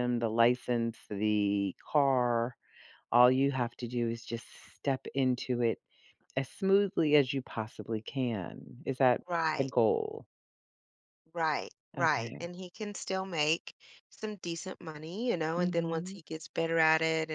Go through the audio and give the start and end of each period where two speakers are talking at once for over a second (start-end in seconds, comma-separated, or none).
none